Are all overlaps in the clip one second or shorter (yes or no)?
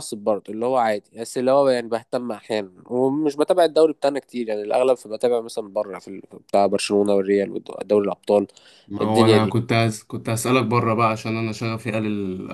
yes